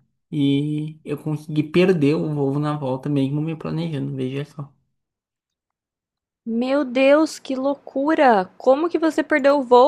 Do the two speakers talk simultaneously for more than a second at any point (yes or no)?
no